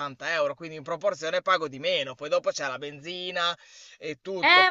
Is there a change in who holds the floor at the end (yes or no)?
yes